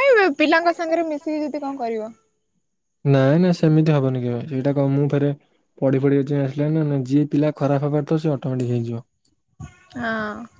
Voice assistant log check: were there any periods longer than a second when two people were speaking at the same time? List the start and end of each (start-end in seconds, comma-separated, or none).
none